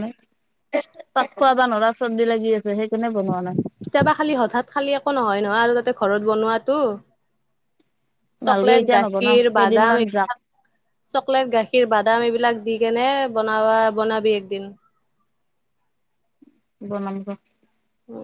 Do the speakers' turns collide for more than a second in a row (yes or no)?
yes